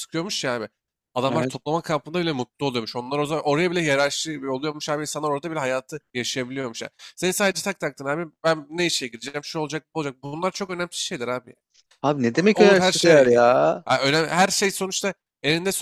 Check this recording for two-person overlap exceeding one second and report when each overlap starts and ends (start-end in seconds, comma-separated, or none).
12.6-13.8